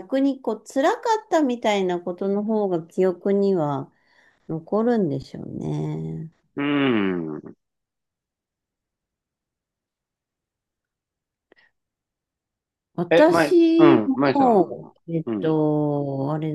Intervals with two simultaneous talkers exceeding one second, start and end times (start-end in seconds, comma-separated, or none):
13.1-15.6